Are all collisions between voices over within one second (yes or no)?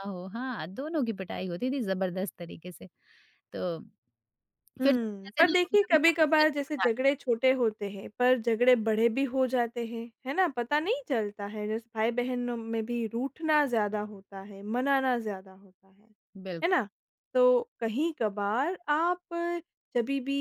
no